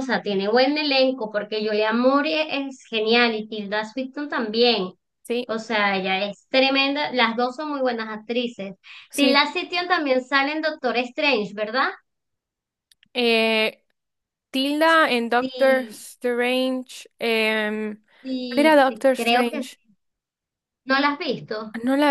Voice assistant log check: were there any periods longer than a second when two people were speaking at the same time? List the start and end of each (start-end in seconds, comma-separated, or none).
18.5-19.8